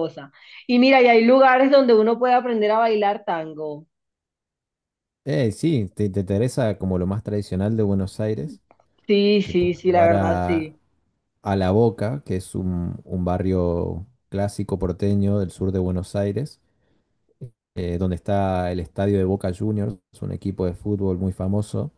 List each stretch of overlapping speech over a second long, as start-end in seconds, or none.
9.4-10.7